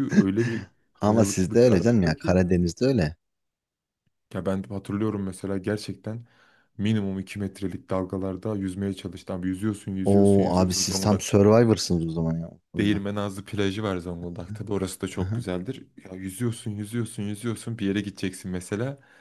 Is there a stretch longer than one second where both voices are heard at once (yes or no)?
yes